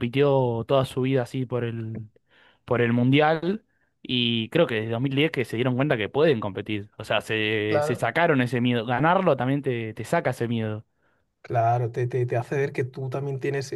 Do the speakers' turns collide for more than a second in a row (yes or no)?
no